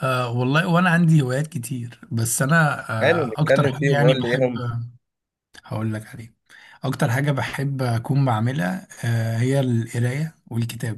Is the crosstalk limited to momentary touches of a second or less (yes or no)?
no